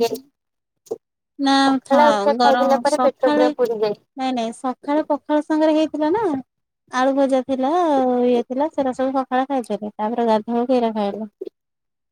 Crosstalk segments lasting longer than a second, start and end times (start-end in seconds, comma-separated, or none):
1.9-4.0